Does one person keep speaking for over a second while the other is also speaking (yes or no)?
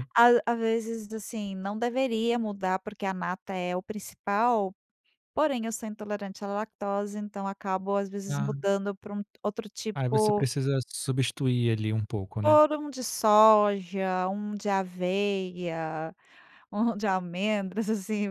no